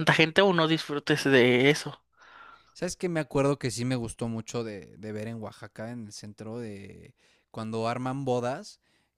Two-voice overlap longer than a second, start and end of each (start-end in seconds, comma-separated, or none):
none